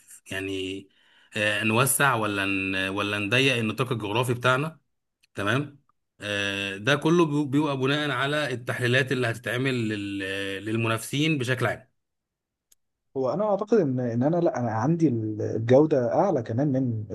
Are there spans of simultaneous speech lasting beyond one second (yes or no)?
no